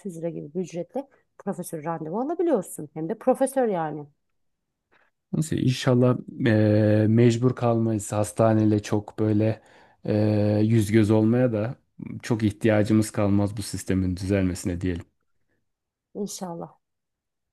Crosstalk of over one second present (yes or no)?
no